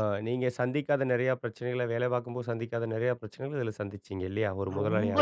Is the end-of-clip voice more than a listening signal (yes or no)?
yes